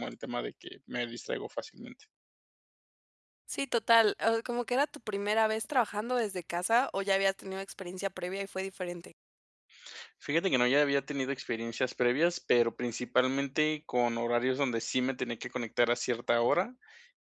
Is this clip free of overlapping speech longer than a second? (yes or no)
yes